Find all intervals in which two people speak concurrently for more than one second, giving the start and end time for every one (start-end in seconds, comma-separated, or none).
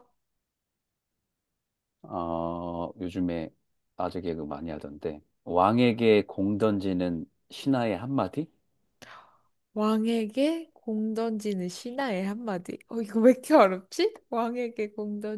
none